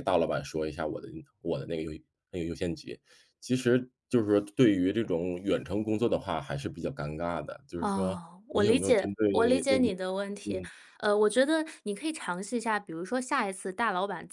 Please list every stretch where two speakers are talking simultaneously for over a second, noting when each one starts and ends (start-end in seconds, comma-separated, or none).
7.8-9.8